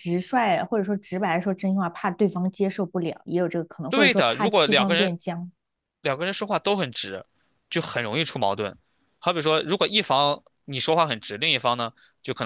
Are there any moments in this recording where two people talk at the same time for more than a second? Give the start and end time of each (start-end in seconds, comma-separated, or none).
3.9-5.1